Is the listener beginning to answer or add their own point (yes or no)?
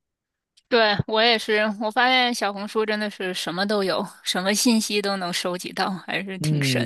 yes